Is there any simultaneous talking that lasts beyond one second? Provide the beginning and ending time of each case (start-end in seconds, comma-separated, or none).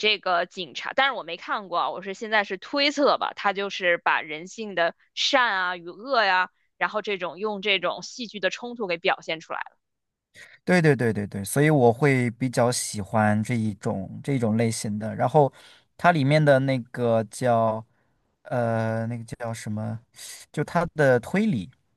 none